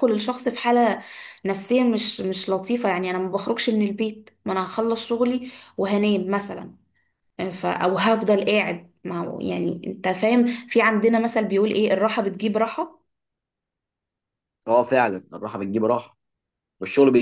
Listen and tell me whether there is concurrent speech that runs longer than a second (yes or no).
no